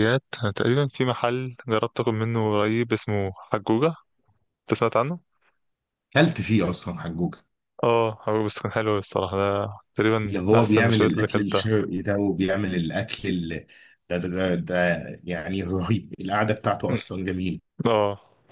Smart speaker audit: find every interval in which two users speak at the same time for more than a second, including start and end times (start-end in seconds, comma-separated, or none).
10.2-11.6